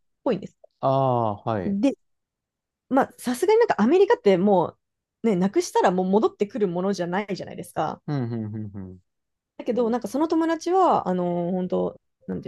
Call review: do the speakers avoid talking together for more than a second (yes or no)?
yes